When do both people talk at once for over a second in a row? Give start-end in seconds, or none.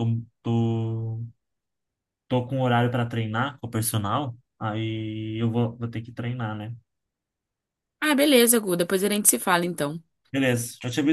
none